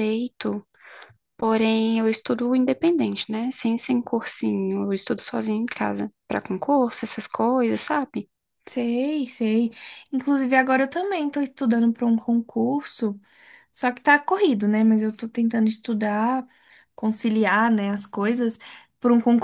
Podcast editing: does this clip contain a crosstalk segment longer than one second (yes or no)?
no